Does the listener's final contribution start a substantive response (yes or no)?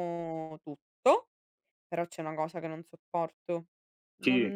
no